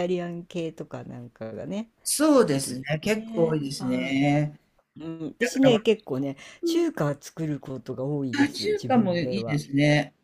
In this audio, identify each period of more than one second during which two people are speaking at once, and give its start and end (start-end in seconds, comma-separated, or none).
2.5-4.2, 8.4-9.6